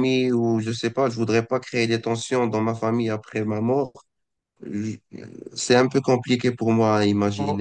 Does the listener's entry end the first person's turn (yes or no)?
yes